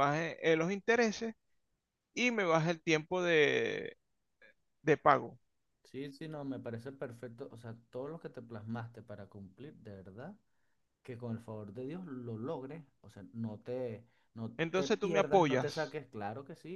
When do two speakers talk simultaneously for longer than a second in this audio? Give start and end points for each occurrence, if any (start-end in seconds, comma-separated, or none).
14.6-16.0